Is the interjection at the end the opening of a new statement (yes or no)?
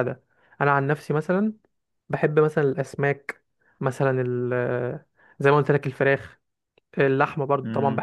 no